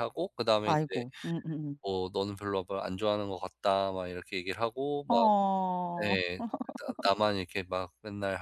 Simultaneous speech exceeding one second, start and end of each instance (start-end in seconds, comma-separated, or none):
none